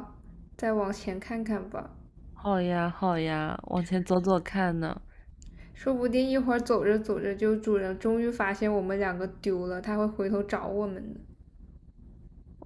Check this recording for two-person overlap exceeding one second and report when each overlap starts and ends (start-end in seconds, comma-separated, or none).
none